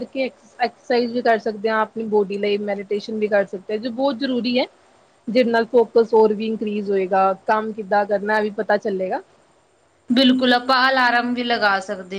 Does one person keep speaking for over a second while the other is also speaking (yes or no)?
no